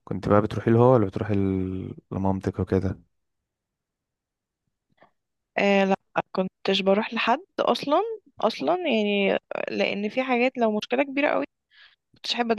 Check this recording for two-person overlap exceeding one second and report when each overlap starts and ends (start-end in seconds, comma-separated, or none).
none